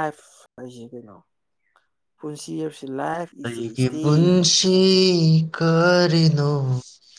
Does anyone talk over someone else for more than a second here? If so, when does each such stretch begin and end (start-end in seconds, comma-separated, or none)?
3.4-4.8